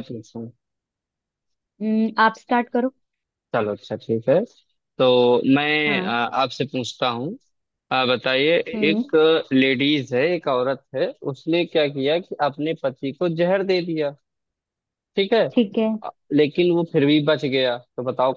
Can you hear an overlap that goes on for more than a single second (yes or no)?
no